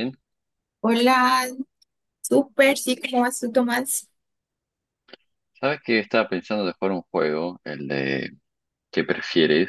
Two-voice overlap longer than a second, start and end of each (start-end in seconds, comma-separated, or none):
none